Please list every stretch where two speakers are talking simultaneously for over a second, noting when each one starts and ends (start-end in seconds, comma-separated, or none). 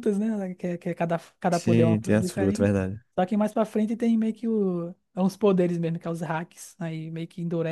1.5-2.7